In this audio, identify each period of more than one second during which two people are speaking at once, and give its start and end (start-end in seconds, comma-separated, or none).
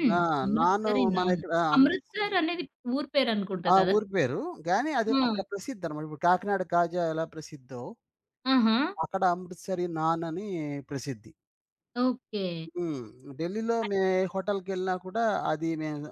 0.6-2.3